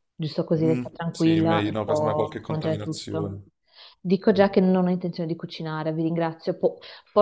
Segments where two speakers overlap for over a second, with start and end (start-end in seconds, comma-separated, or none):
0.6-3.4